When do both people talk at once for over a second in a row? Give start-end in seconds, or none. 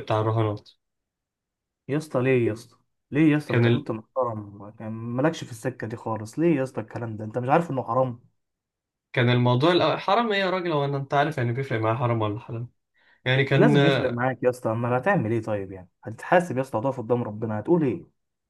none